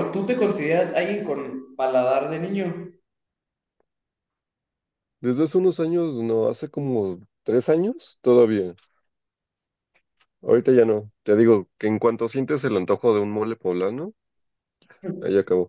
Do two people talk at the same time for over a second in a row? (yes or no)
no